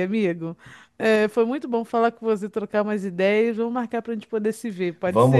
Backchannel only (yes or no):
no